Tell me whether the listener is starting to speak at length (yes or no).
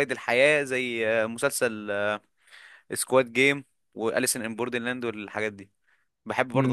yes